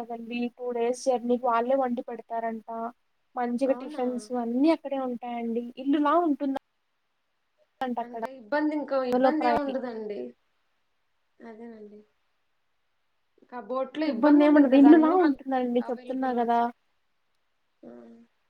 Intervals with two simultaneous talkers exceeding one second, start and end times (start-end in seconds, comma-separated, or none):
14.1-16.6